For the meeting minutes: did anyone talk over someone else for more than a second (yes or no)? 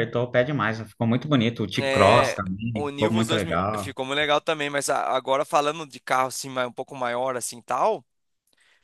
yes